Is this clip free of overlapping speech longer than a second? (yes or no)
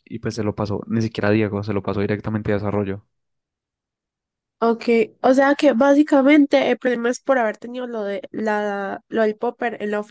yes